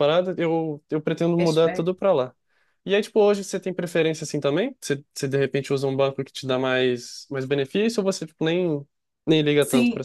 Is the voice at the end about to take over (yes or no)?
yes